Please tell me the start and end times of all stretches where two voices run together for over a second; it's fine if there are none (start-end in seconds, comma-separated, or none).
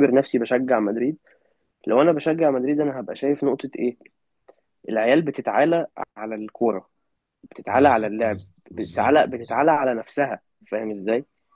7.7-9.6